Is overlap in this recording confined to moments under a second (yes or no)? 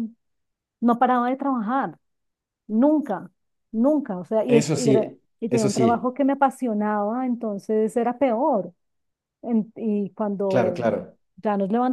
no